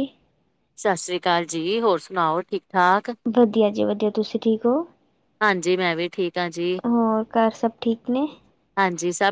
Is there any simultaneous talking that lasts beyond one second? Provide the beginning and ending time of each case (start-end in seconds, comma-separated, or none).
none